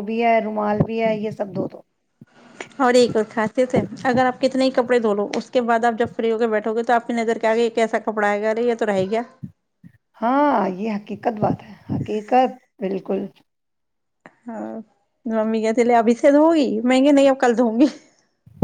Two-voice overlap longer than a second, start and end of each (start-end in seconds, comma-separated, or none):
none